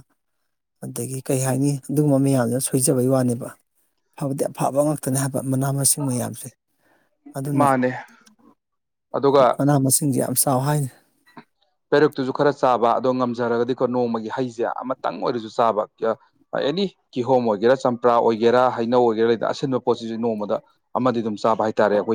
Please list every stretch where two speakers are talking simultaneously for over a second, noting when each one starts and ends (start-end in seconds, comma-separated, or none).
none